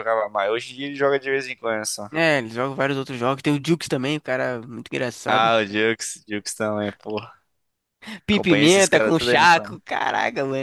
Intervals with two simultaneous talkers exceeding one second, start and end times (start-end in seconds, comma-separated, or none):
8.3-9.8